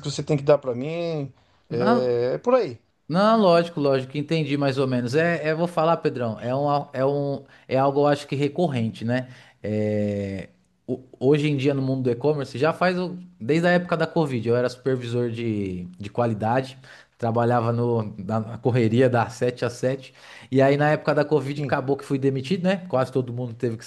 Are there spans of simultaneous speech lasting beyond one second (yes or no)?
no